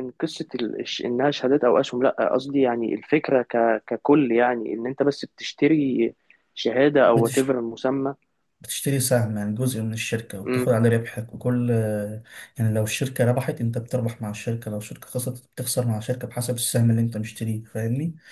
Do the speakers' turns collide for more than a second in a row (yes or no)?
no